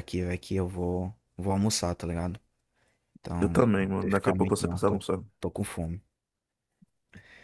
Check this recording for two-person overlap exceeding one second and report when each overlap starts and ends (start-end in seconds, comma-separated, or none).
3.4-5.0